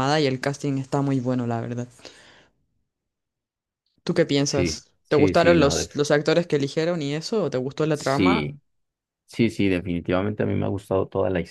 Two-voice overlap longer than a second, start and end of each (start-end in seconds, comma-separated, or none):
4.5-5.9